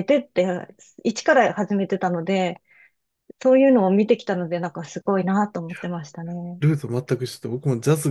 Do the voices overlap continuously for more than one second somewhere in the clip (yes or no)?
no